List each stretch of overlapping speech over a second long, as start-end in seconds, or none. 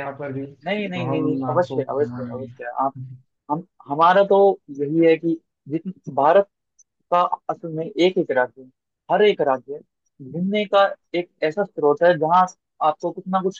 0.9-2.5